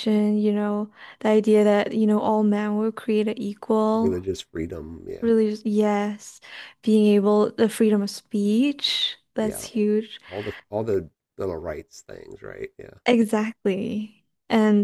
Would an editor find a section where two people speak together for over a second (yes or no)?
no